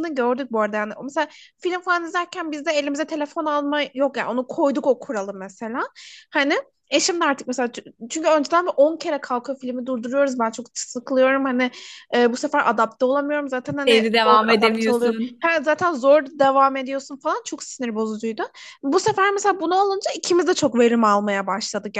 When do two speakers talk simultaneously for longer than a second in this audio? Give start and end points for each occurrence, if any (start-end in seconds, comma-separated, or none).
13.8-15.5